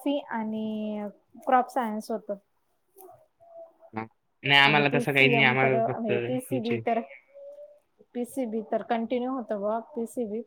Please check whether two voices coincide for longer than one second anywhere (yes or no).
yes